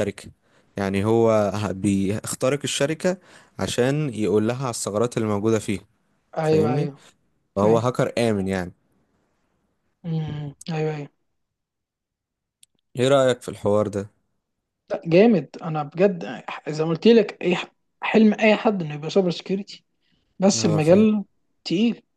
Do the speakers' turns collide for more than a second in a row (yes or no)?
no